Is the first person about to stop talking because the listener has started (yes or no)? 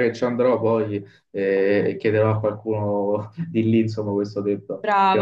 yes